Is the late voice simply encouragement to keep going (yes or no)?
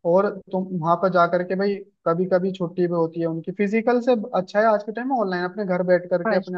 no